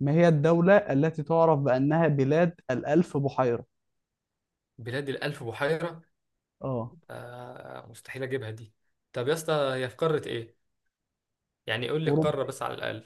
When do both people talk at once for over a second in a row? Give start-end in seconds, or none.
none